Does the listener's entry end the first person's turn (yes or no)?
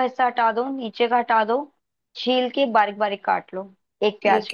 yes